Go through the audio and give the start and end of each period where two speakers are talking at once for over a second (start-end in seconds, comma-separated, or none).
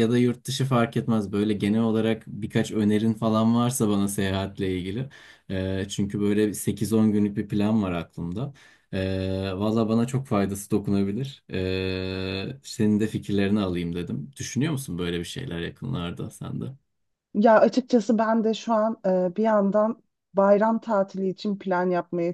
none